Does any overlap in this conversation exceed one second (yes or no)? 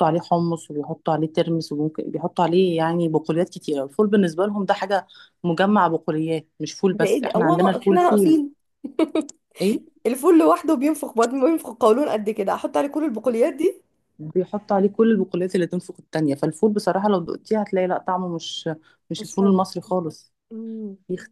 yes